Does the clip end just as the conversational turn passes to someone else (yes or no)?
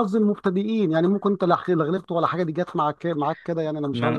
yes